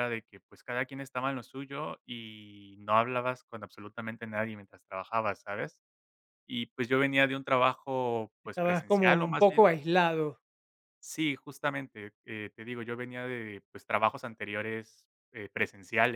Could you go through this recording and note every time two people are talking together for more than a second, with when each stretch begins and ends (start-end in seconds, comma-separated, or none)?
8.4-9.7